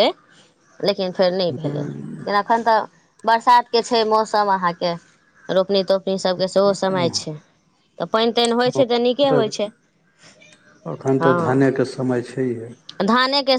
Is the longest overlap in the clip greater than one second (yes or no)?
no